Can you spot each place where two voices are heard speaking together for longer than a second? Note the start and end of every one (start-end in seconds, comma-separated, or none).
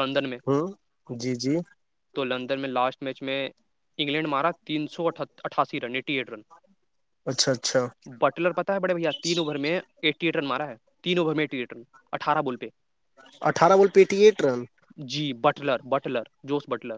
none